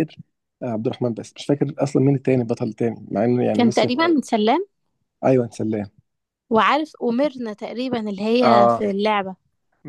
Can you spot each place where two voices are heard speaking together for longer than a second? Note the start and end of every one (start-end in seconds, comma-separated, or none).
none